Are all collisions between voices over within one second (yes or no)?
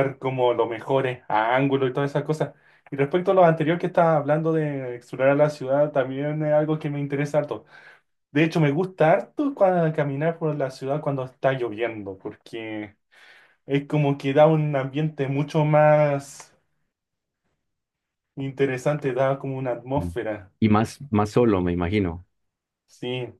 yes